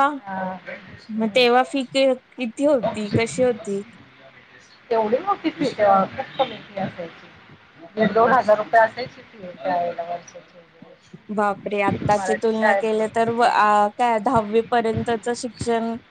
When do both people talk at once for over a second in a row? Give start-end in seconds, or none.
11.3-13.7